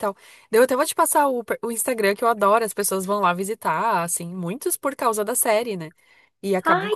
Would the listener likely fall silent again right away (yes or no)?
yes